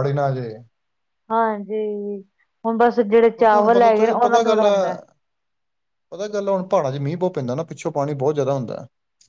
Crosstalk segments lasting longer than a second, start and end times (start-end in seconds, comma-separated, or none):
3.2-4.7